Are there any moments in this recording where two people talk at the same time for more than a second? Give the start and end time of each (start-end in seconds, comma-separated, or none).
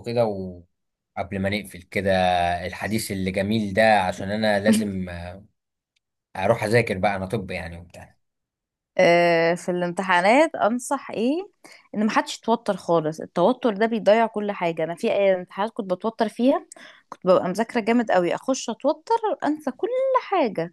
none